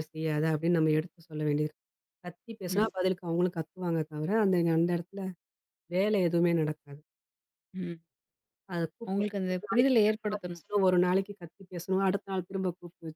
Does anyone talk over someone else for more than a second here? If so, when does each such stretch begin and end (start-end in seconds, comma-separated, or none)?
9.1-10.6